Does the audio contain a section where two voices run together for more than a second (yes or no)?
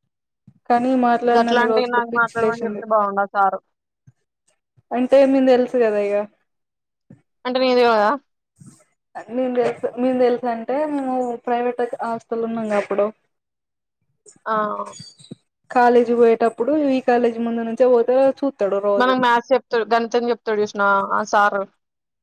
yes